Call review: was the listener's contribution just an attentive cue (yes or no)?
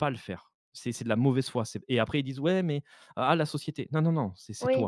no